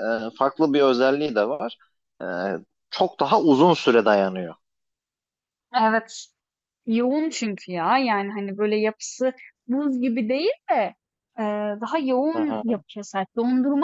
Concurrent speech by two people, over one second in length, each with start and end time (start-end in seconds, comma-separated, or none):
none